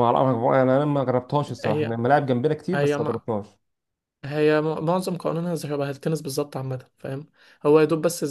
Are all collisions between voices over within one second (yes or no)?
yes